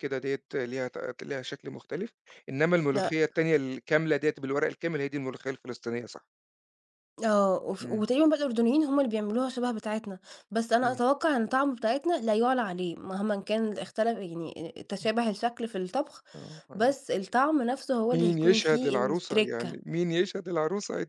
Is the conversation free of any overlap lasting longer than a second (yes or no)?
no